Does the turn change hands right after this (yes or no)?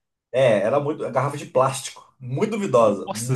yes